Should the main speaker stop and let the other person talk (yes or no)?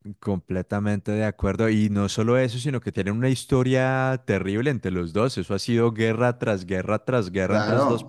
yes